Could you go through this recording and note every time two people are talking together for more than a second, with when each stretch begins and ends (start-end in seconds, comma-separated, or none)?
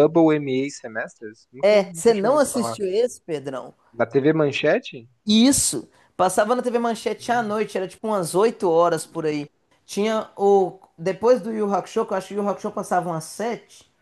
1.6-2.8